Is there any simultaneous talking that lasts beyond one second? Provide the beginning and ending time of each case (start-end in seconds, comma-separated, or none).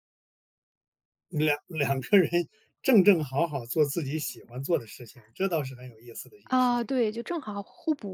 none